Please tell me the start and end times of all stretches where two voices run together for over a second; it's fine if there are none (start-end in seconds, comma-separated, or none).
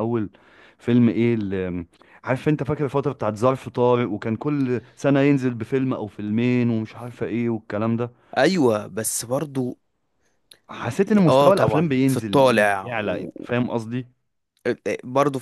11.3-12.9